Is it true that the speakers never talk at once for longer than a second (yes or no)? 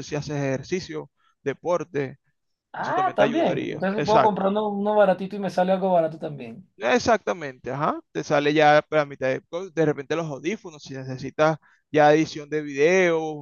no